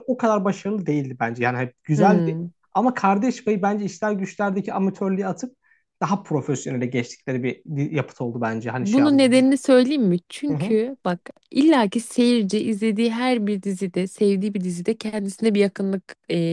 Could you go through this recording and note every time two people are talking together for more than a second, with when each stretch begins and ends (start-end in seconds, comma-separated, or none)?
none